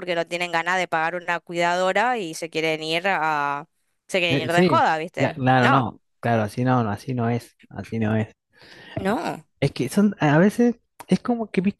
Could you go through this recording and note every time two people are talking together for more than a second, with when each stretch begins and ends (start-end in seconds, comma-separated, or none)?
4.3-5.9